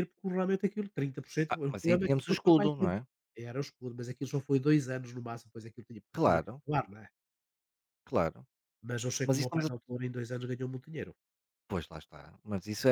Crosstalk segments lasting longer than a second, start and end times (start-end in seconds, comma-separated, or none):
1.5-2.9